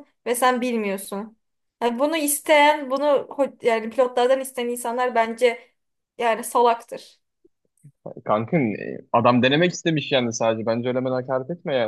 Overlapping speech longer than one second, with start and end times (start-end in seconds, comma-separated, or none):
none